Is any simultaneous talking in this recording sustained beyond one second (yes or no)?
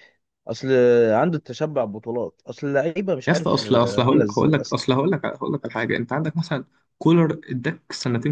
yes